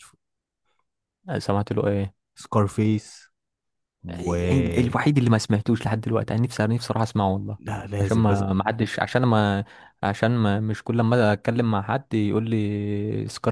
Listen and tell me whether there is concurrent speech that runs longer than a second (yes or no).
no